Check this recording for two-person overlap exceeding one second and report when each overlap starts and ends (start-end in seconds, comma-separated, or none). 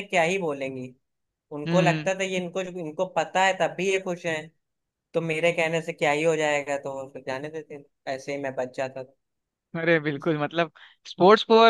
none